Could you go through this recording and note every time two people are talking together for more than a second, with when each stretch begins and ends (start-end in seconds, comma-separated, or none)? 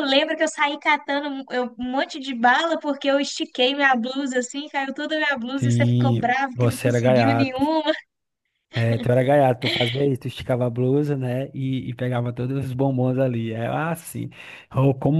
5.5-7.6